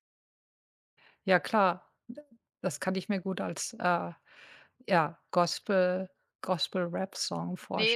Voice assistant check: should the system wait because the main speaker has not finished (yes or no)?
no